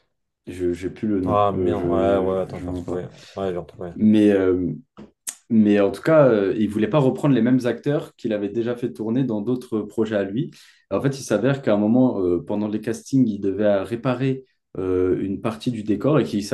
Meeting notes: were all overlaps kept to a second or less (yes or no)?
no